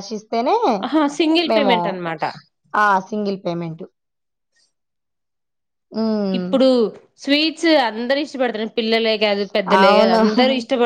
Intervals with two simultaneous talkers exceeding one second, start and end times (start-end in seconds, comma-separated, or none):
none